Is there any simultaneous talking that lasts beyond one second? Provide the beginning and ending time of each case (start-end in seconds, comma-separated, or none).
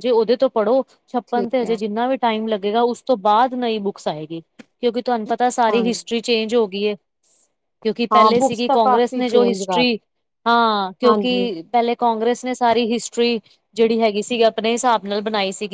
8.1-9.8